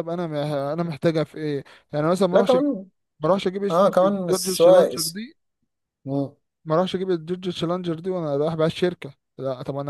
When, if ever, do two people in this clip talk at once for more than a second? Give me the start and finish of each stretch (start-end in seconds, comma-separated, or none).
3.7-5.2